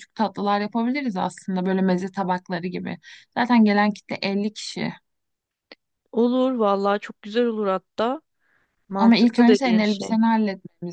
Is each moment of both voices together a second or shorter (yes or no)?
no